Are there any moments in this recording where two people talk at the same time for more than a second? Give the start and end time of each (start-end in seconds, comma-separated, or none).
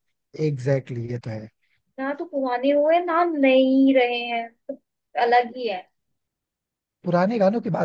none